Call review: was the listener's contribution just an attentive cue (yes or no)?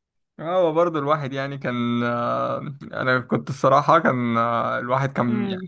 yes